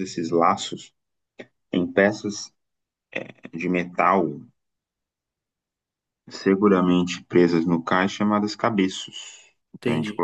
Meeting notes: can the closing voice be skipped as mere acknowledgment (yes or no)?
yes